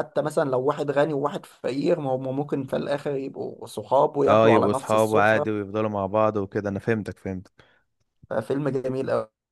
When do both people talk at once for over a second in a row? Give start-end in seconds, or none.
4.3-5.5